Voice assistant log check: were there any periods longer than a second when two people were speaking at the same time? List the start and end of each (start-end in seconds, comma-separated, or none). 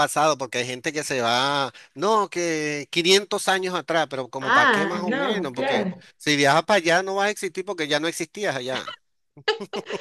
4.4-6.0